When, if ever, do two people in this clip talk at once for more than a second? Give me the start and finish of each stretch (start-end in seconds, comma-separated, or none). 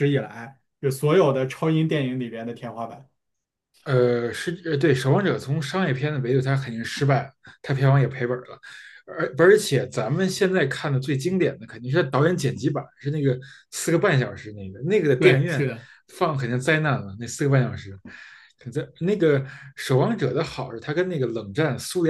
none